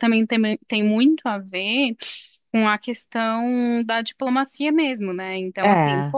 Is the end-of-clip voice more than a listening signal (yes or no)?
no